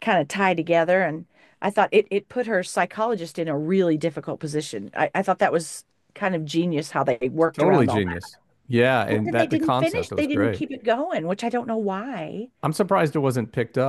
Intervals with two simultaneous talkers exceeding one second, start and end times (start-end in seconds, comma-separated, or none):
9.1-10.6